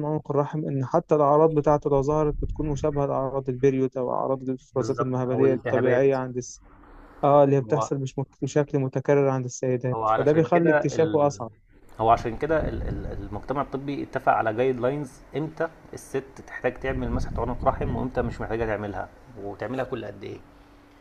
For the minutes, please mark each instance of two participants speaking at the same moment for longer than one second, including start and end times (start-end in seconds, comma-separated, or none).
4.7-6.2, 9.9-11.3